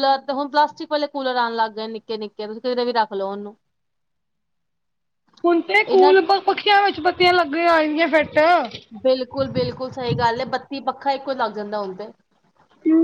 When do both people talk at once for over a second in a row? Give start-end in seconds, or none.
none